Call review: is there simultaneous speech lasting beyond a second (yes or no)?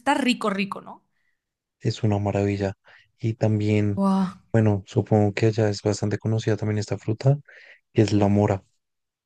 no